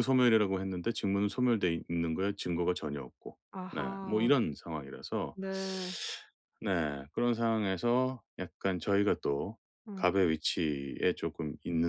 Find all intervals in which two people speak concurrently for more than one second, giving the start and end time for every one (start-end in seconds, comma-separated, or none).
none